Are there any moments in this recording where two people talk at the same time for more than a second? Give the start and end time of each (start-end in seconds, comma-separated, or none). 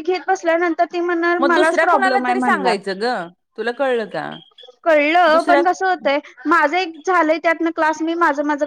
1.4-2.7